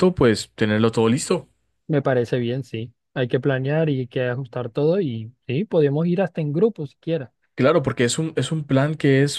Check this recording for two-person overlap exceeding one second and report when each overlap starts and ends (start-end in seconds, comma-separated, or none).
none